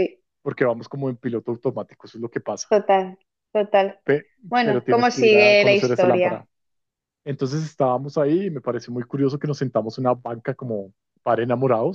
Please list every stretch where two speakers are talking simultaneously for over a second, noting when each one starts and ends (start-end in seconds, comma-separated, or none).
4.5-6.4